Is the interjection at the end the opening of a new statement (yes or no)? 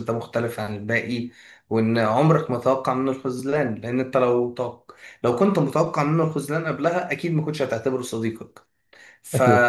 no